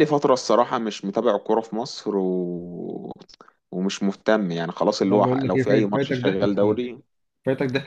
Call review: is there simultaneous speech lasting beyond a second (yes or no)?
yes